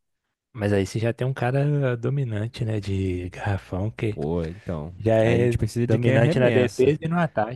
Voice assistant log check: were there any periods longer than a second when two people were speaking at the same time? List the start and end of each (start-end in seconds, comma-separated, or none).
5.0-7.0